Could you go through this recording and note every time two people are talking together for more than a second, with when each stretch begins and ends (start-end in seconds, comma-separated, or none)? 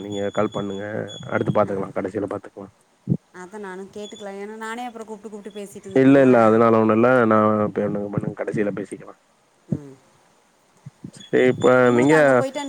none